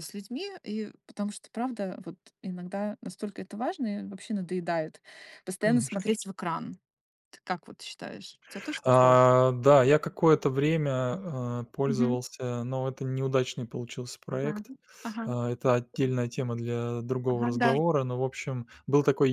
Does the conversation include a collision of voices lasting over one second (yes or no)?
no